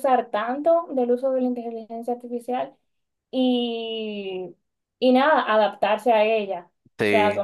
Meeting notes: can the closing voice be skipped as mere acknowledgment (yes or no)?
yes